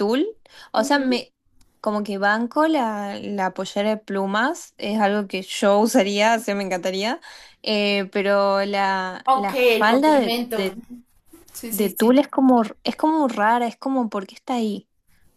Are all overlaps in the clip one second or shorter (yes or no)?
no